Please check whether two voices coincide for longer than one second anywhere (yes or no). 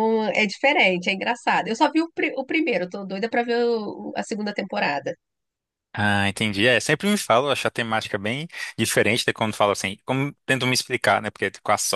no